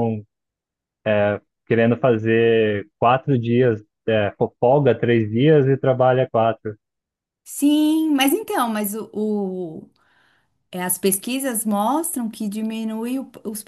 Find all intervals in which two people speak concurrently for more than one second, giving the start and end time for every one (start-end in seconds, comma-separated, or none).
none